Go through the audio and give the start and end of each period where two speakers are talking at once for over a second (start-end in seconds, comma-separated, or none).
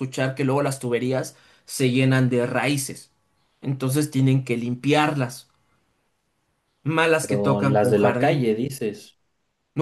7.2-8.5